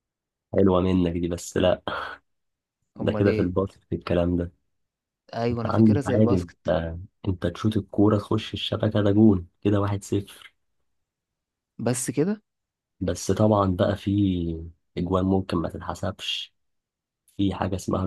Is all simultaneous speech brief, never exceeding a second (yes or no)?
no